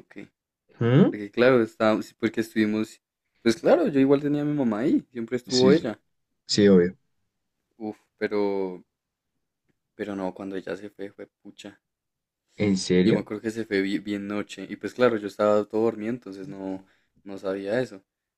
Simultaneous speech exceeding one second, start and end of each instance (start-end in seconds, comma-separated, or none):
none